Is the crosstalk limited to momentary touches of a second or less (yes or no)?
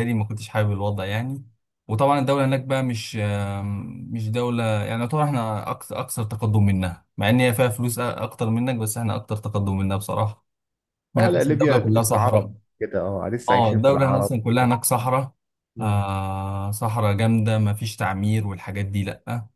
no